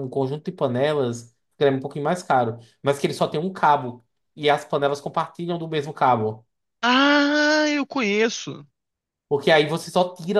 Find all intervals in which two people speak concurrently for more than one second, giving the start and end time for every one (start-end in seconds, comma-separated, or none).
none